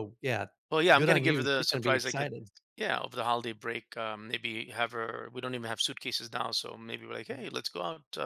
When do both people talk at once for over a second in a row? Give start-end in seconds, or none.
0.9-2.3